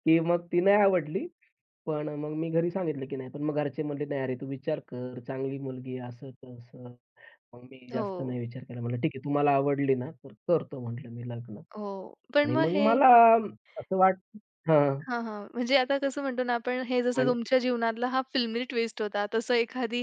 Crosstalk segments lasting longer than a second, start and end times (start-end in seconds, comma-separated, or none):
none